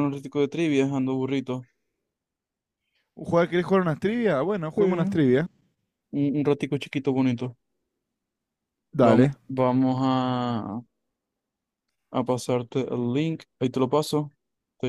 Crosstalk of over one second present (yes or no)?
no